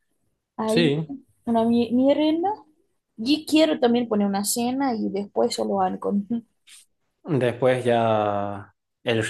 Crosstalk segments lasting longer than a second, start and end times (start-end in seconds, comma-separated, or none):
none